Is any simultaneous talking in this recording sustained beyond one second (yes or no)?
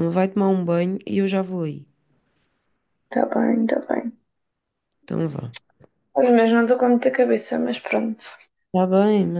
no